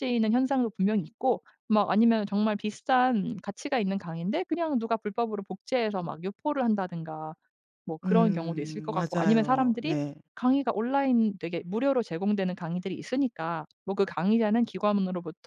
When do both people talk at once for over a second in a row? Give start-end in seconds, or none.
8.0-10.0